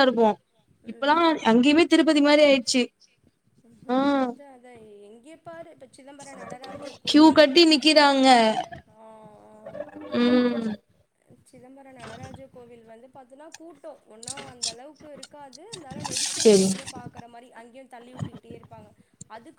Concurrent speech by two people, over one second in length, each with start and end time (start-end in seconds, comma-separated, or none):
none